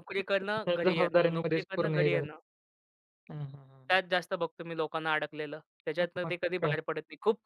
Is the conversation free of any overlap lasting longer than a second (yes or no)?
no